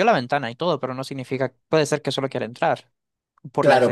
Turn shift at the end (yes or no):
yes